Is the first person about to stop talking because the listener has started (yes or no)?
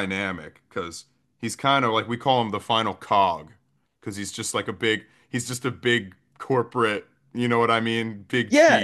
yes